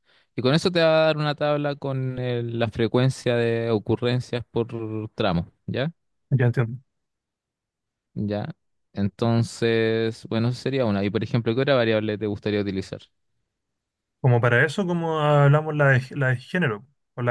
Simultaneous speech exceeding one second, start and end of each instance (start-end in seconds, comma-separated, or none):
none